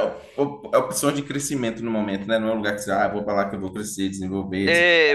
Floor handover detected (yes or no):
yes